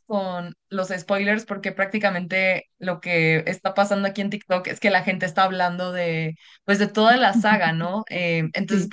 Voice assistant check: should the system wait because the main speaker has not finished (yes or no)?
yes